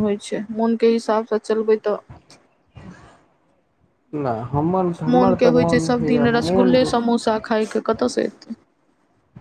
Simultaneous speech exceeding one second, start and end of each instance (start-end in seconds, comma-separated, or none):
5.1-7.0